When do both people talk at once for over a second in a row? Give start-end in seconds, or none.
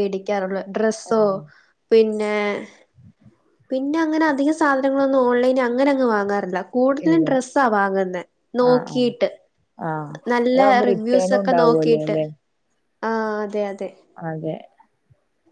10.5-12.2